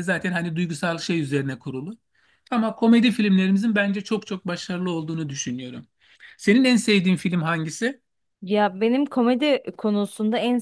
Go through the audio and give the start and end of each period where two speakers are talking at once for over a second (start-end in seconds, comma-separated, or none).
none